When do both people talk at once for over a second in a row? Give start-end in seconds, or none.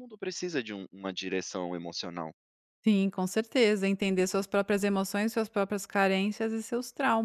none